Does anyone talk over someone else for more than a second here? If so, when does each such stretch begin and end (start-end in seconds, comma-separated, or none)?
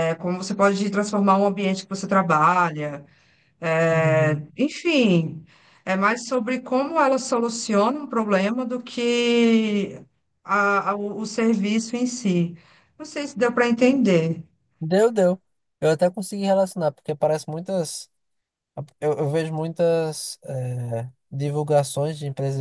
none